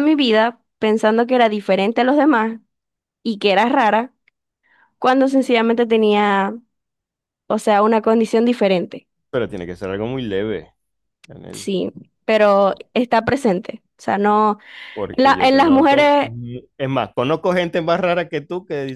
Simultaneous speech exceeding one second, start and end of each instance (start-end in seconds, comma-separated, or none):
15.1-16.3